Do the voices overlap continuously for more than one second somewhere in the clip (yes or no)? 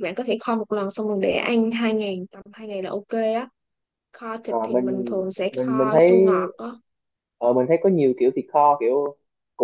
no